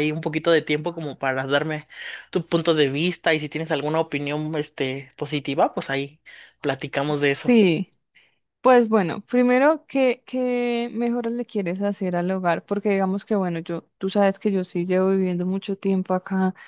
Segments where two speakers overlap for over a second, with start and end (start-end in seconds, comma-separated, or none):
none